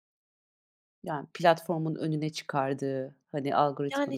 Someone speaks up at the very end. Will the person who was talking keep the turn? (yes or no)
no